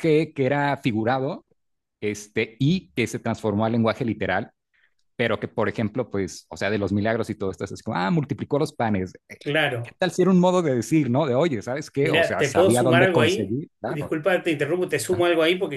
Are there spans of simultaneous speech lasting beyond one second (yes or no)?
yes